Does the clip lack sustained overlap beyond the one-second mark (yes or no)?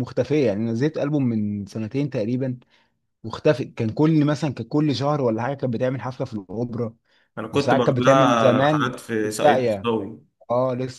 no